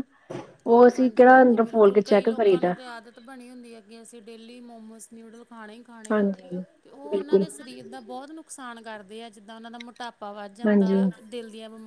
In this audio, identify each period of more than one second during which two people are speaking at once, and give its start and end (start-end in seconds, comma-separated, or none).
1.0-2.7